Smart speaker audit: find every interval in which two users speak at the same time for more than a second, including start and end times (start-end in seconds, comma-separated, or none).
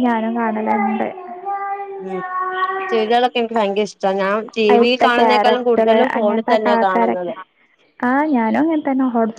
4.7-7.3